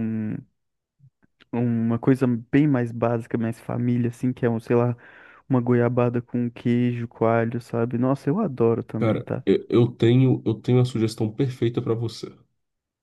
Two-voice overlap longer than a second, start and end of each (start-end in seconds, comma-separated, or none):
none